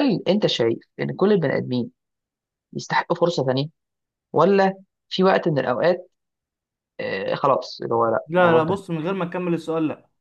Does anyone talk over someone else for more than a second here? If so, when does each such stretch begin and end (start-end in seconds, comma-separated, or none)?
none